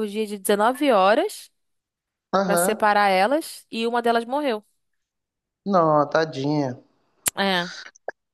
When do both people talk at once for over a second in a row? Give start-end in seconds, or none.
none